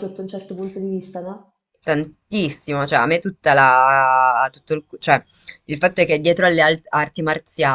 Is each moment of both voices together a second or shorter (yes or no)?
yes